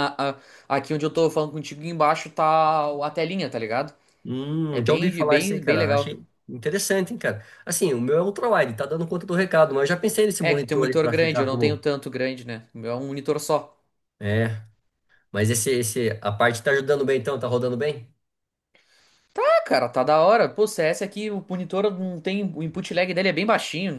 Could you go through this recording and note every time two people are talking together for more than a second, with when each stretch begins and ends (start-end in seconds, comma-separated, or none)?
4.7-6.2, 10.4-11.8